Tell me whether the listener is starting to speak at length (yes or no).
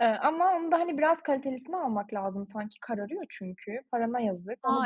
yes